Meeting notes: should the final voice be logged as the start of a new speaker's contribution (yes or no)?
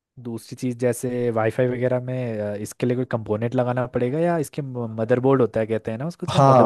yes